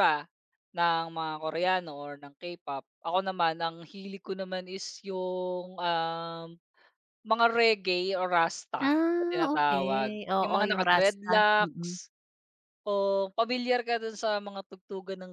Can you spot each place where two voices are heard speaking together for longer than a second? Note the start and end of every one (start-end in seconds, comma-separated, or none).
8.9-11.9